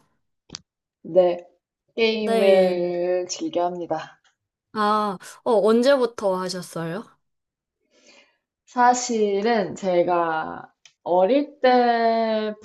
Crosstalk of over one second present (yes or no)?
no